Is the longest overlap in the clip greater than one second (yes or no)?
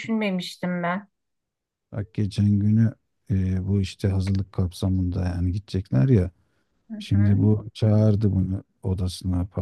no